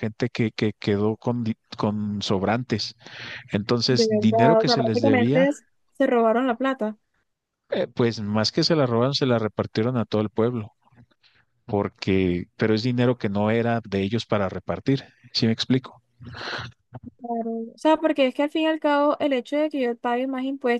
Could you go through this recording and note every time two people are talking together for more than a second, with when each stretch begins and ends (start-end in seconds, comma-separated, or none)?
3.9-5.5